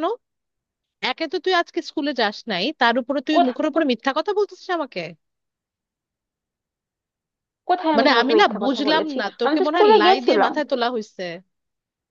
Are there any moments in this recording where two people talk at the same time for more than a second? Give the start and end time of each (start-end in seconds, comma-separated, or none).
8.0-10.5